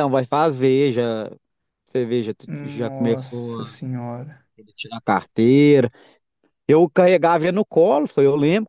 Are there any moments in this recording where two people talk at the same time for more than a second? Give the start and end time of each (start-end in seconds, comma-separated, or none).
2.5-3.8